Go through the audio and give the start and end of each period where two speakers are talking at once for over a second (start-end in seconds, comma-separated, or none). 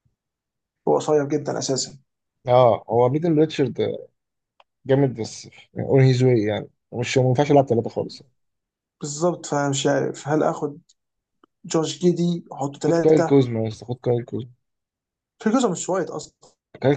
none